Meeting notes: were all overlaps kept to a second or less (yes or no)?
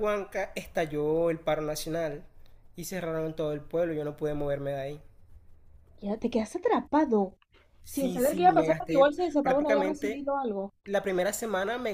no